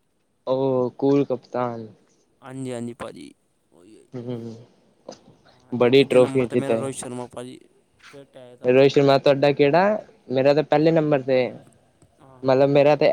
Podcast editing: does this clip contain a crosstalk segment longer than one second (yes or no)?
yes